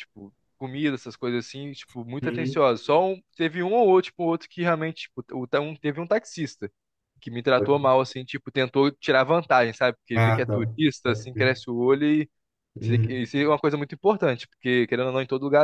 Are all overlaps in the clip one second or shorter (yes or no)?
no